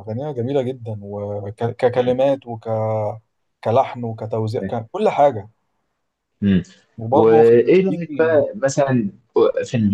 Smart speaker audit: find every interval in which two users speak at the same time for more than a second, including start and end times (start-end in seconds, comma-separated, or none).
7.1-8.3